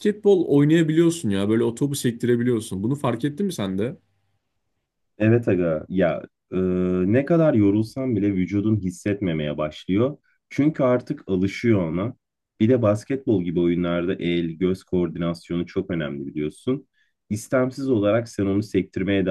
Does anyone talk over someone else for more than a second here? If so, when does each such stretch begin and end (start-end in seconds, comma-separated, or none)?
none